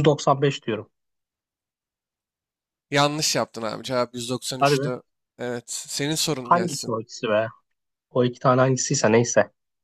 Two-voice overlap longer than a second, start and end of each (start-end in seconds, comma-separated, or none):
none